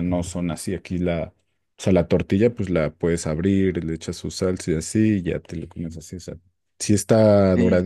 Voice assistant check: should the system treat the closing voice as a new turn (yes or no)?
no